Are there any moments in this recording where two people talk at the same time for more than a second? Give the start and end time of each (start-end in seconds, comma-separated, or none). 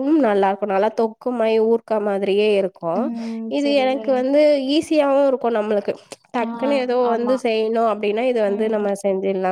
none